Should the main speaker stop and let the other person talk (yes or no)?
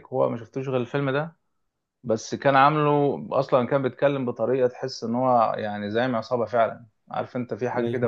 no